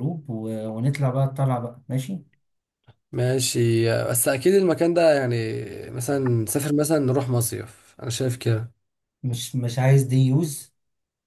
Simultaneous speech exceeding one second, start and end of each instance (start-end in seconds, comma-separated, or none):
none